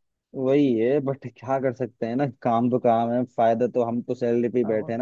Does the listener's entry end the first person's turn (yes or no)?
yes